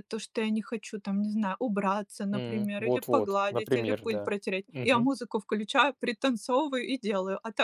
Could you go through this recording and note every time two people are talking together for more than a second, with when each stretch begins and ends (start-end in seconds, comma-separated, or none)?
2.3-5.1